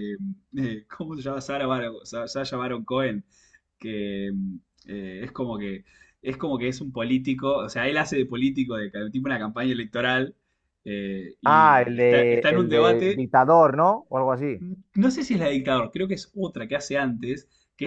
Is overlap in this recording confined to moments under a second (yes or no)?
no